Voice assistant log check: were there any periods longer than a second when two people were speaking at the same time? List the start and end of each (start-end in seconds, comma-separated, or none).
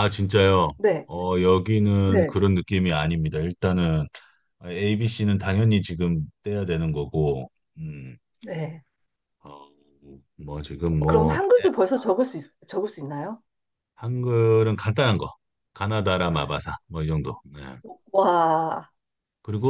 none